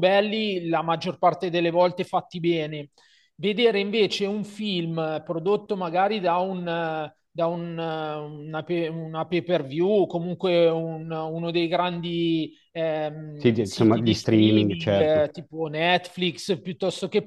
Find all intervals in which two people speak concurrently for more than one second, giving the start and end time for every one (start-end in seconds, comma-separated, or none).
13.3-15.3